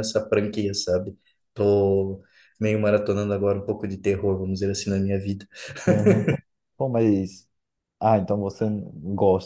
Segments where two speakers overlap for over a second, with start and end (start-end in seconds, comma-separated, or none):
none